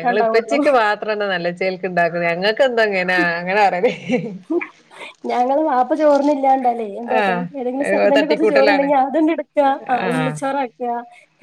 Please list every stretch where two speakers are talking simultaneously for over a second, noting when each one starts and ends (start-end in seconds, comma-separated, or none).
7.2-8.9